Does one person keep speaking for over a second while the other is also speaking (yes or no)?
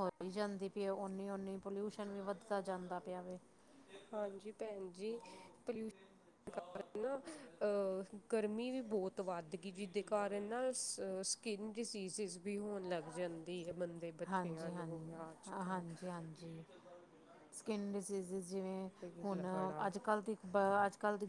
no